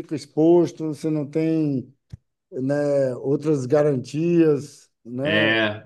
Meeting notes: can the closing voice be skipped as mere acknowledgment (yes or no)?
no